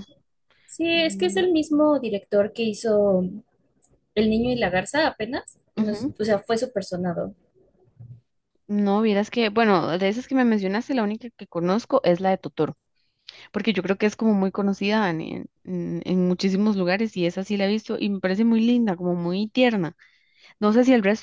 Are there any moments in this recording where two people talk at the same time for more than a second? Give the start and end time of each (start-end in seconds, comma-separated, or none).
none